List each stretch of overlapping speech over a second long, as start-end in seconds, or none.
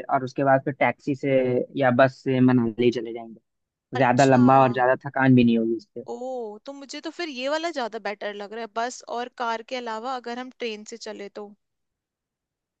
none